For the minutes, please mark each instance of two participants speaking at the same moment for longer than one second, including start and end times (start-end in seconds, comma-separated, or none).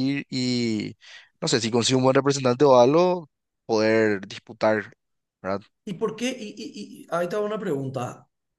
none